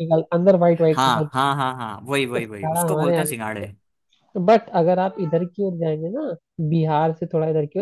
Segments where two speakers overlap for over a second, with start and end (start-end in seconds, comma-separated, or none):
2.3-3.6